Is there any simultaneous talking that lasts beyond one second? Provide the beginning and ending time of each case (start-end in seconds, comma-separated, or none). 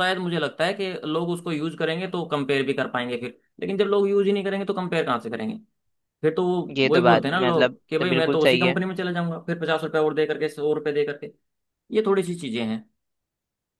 6.8-8.8